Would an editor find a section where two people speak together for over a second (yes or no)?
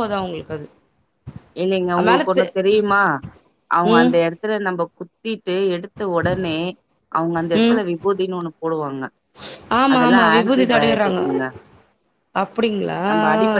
yes